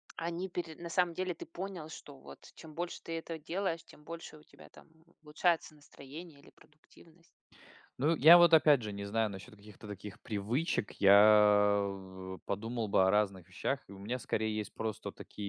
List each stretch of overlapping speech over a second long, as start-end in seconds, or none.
none